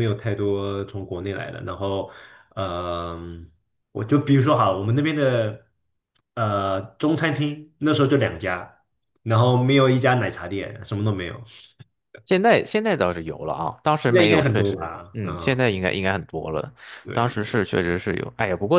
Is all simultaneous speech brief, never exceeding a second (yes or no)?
no